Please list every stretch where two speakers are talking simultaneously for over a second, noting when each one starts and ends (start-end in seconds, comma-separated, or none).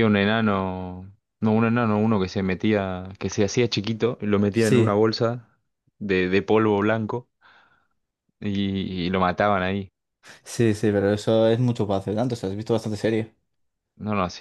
none